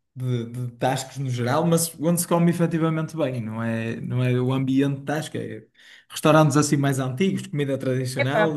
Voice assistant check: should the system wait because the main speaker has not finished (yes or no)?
no